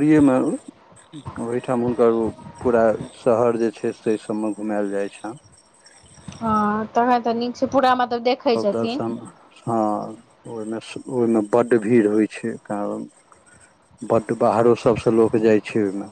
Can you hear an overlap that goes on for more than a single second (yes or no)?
no